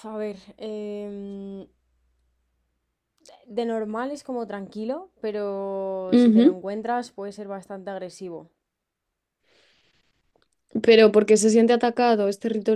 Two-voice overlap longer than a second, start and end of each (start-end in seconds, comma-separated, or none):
none